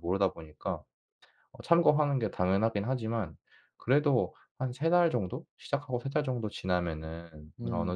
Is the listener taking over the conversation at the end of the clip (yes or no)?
no